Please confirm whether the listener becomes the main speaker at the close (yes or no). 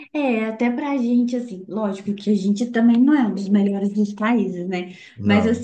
no